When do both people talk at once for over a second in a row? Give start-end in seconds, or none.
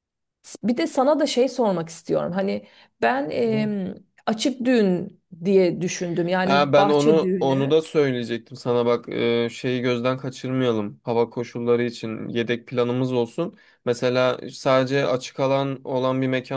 6.4-7.7